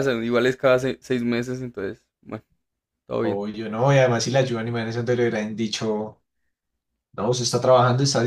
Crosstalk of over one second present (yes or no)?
no